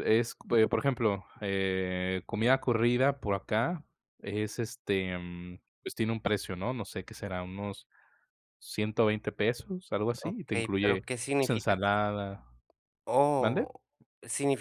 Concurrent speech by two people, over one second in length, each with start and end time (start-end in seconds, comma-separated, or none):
10.2-11.8